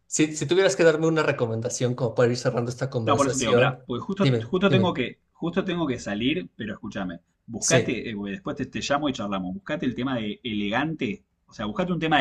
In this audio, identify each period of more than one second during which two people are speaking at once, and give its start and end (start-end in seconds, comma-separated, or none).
3.0-5.0